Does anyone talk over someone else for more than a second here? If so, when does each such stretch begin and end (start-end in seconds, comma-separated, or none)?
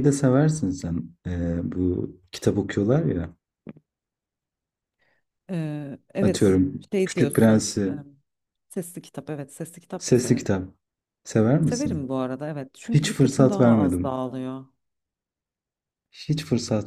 6.2-7.9, 12.9-14.2